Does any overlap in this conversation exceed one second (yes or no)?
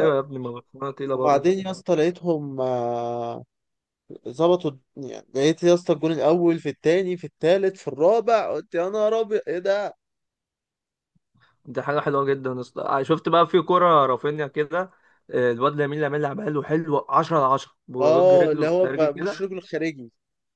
yes